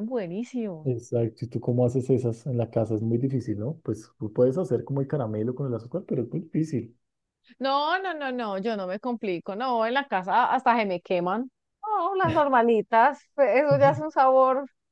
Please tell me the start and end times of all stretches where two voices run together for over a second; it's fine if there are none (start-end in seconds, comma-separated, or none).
none